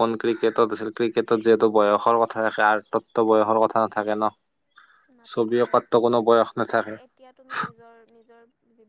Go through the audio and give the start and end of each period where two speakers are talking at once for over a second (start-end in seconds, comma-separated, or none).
none